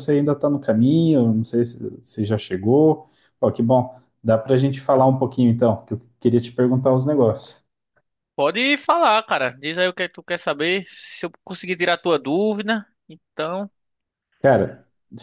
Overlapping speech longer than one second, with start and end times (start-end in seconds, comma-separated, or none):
none